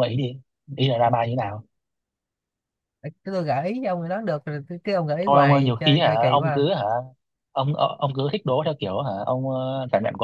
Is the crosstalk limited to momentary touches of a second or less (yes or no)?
no